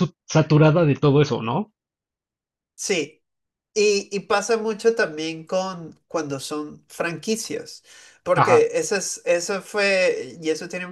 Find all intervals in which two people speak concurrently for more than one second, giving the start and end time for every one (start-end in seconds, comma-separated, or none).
none